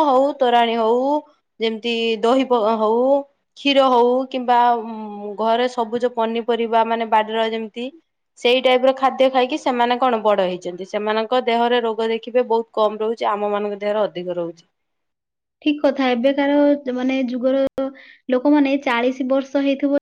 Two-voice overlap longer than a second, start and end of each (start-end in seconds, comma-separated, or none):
none